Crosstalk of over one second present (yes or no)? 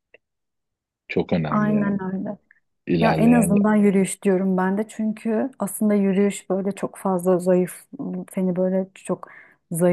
no